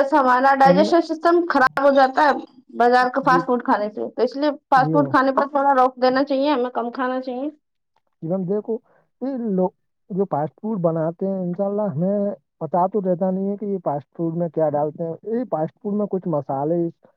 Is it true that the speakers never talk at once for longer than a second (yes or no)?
yes